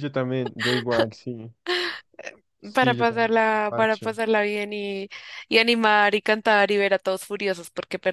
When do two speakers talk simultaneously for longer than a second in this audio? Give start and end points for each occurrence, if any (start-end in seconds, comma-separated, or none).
2.7-4.1